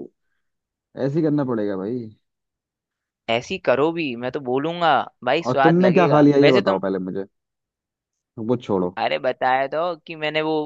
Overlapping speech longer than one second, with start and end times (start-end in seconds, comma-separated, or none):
5.4-6.8